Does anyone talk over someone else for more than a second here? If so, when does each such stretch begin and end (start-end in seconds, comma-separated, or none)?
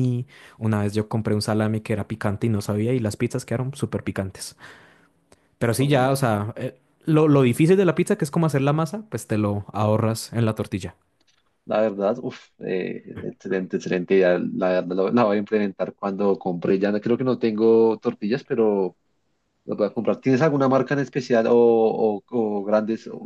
none